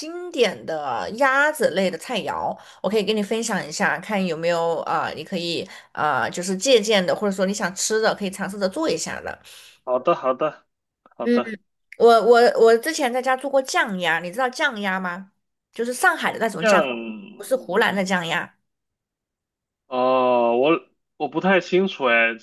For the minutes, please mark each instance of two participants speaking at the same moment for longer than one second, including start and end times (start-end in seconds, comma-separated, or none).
none